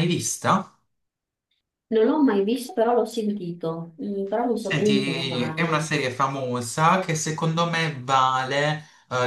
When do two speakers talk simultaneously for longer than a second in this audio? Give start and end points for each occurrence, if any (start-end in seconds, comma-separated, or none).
4.6-5.9